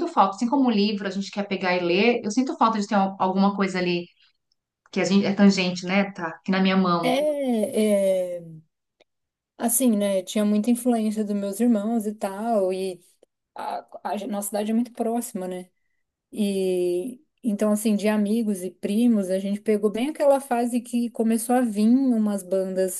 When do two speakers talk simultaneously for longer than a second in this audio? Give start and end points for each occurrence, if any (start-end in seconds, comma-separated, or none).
none